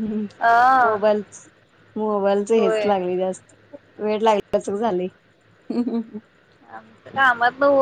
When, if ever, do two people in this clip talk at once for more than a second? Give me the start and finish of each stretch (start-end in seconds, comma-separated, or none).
none